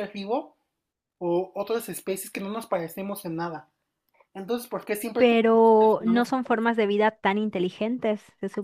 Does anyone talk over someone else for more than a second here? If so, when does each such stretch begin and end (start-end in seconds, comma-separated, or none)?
5.2-6.7